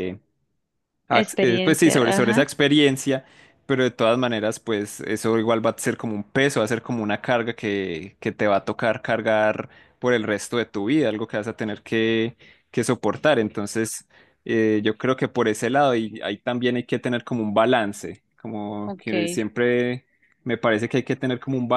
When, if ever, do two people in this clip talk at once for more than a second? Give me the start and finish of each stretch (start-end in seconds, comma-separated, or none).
1.1-2.5